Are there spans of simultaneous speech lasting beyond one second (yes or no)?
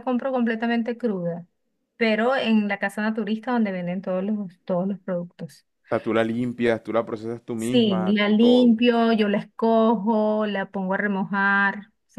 yes